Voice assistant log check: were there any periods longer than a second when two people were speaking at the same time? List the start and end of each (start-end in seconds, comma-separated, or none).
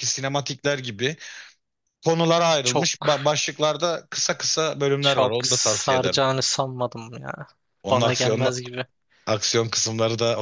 5.0-6.2